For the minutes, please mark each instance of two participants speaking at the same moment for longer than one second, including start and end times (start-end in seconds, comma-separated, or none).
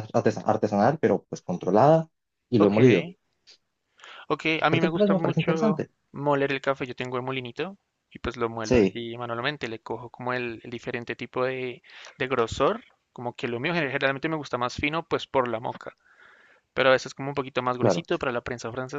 4.7-5.9